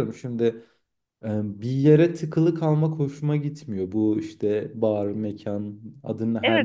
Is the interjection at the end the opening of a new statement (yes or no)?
yes